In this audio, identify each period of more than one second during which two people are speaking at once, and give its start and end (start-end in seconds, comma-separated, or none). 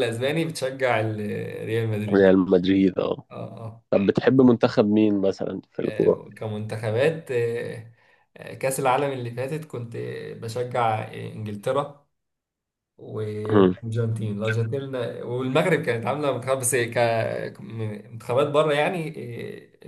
none